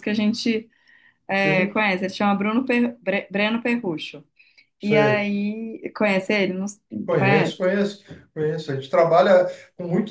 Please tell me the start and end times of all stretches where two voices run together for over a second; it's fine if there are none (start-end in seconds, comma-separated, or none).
none